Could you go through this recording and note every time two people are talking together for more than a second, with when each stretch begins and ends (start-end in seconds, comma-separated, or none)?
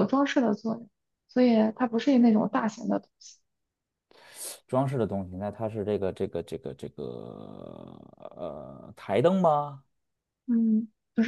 none